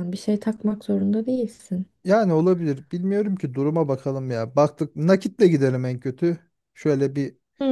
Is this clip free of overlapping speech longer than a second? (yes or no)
yes